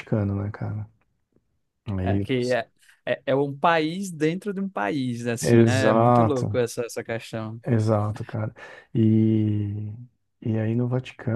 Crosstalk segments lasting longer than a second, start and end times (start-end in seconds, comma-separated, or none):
5.4-6.6